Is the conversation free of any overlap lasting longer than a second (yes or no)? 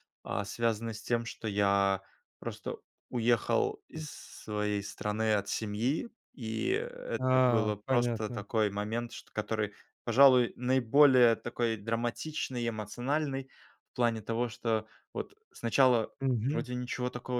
no